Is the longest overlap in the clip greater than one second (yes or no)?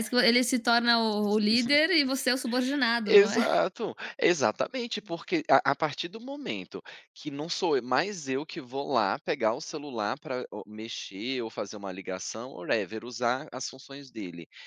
no